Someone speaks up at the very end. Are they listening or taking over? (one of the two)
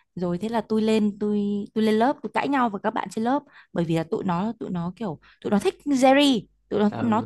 listening